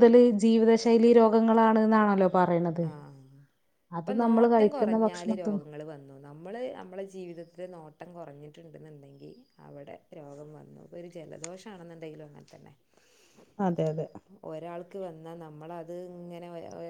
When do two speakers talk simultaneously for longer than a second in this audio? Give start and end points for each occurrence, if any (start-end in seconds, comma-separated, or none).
4.2-5.6